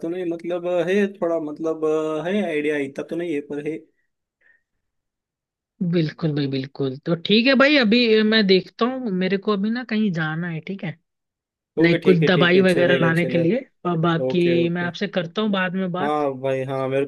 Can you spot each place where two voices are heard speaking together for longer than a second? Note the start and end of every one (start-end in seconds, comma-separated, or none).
11.8-13.7